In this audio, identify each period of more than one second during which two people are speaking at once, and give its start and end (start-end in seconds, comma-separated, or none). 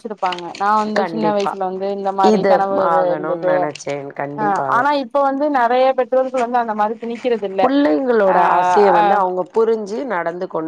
none